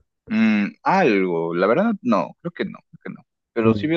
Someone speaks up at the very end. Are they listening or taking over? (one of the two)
listening